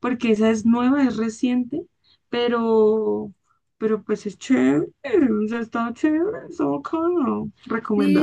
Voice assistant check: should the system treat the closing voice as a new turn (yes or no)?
yes